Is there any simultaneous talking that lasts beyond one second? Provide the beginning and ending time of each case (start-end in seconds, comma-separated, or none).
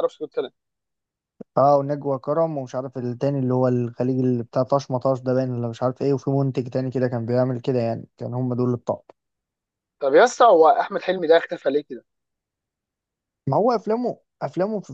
none